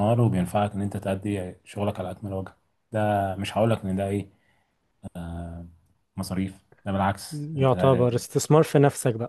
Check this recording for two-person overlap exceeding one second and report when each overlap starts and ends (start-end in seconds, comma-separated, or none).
none